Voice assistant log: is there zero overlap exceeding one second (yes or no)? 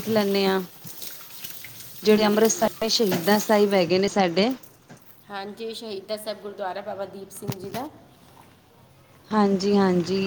yes